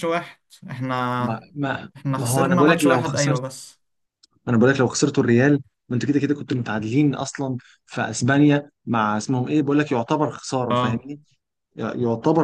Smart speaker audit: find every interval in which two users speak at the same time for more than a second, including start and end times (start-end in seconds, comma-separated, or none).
1.9-3.4